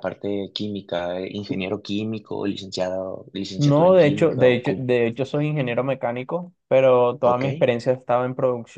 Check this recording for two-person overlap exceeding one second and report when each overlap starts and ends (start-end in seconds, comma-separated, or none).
3.6-4.9